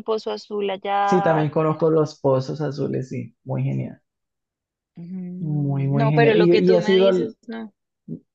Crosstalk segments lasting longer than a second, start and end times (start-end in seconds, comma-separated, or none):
5.4-7.3